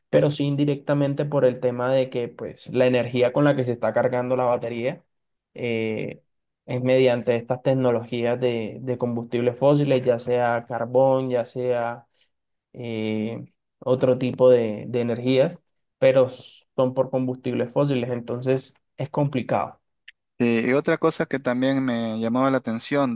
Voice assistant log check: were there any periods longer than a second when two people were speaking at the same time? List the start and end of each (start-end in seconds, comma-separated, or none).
none